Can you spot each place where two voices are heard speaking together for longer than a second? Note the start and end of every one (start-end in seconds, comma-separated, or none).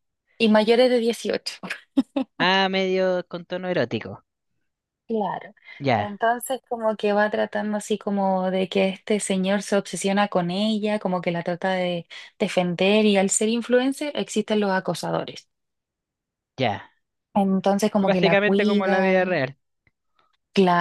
18.0-19.4